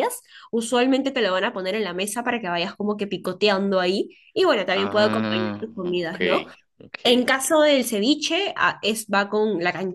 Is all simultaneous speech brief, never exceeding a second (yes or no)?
no